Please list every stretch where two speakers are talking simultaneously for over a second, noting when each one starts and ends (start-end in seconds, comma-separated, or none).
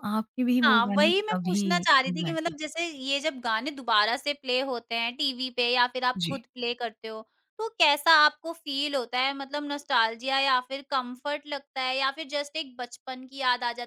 0.6-2.5